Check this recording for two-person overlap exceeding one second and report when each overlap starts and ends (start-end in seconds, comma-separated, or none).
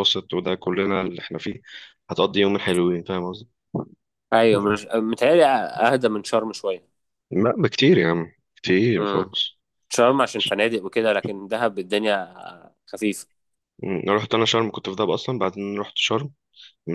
none